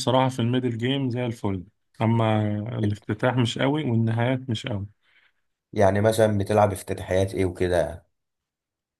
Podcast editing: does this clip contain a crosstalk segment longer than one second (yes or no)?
no